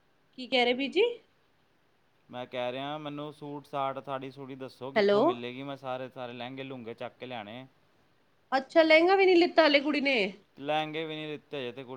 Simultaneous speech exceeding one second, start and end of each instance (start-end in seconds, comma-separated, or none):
none